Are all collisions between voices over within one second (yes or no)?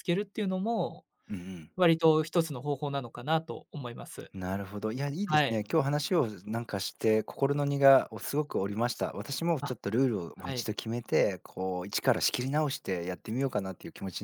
yes